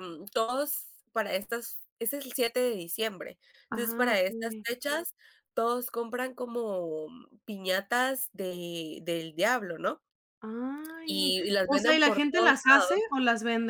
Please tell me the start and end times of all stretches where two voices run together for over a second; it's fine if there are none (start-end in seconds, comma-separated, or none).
11.0-12.6